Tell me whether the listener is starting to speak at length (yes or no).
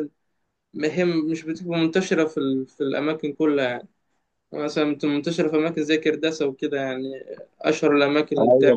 yes